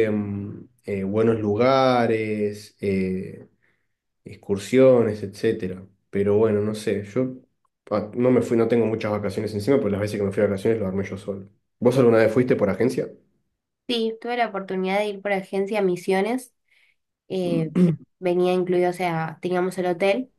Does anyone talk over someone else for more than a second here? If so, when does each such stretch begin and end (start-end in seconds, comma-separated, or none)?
none